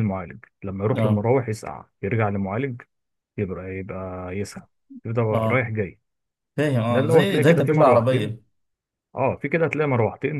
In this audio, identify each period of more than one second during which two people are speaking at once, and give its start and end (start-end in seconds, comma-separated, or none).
6.9-8.4